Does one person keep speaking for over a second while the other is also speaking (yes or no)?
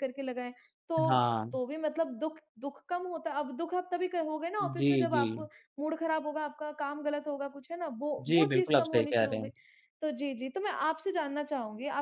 yes